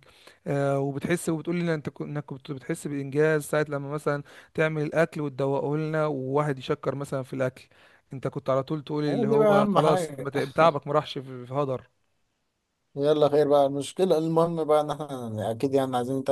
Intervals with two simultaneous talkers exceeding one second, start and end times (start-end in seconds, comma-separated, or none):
9.1-10.3